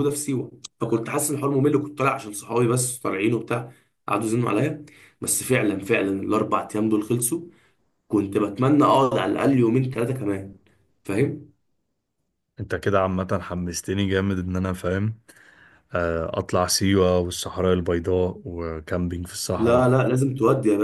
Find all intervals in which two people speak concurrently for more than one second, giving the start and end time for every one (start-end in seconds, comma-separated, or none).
none